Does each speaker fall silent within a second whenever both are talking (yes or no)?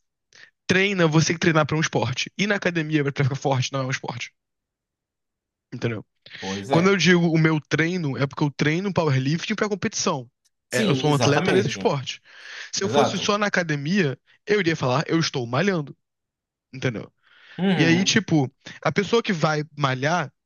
no